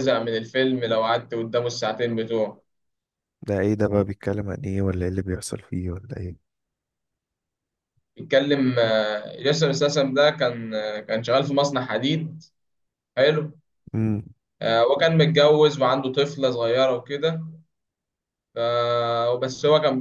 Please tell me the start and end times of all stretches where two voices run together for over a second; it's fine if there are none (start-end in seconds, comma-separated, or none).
none